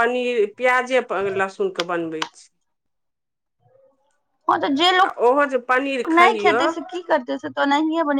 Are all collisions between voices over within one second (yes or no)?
yes